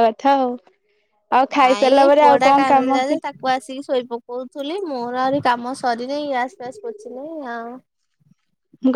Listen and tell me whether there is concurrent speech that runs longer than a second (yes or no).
yes